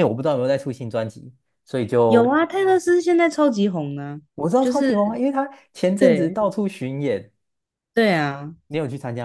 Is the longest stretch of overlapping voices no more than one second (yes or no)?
yes